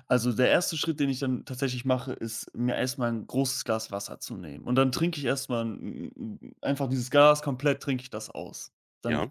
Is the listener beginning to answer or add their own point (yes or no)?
no